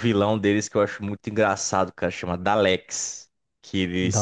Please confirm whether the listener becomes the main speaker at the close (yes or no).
no